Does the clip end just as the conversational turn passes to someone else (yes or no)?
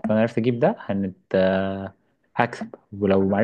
no